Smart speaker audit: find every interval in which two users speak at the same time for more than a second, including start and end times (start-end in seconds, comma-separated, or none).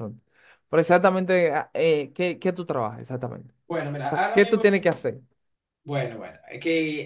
none